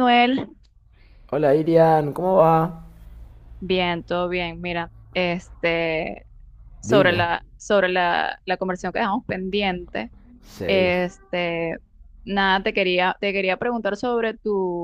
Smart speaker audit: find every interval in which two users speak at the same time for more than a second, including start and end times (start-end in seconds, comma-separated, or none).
none